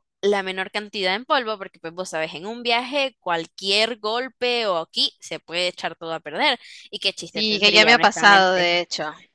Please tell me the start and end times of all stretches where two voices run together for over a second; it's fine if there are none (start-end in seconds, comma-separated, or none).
7.3-8.8